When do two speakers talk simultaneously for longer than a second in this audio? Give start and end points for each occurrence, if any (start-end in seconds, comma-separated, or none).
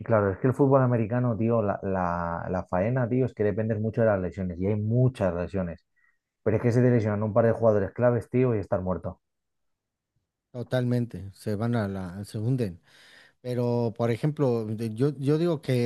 none